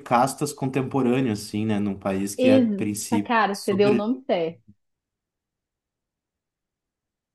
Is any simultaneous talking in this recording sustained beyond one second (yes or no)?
yes